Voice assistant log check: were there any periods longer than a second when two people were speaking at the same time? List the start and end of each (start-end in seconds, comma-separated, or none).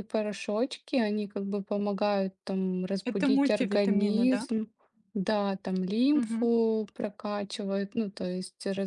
3.0-4.5